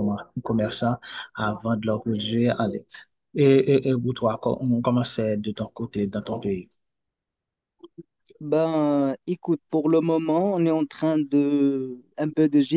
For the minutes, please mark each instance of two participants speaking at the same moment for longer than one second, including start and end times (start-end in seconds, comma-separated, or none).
none